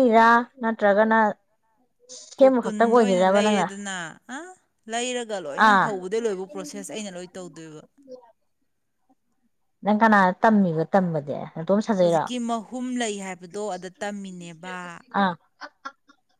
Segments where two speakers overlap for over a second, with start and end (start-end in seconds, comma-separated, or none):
2.4-3.7